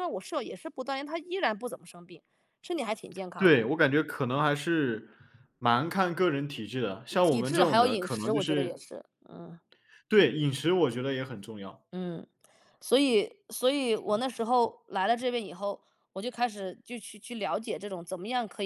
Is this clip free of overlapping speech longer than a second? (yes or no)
no